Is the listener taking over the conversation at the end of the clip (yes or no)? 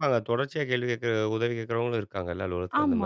yes